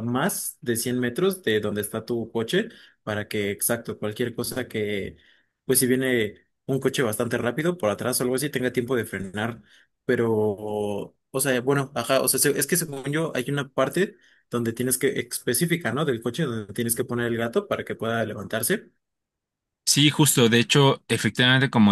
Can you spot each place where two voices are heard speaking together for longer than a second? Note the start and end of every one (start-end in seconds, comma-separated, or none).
none